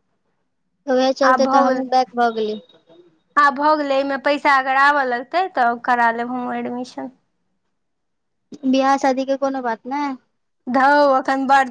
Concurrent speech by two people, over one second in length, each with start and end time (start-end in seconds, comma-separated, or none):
none